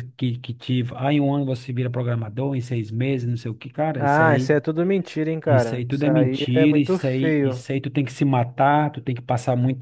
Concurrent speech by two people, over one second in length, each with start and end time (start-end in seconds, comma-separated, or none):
5.5-7.6